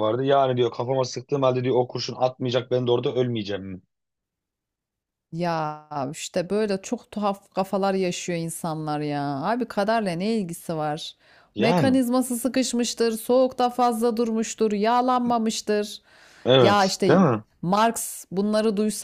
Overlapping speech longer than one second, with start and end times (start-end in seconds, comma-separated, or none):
none